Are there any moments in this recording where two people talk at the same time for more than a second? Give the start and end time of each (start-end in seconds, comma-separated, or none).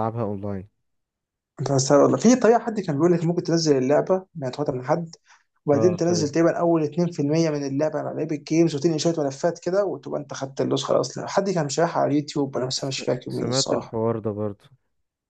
12.6-14.0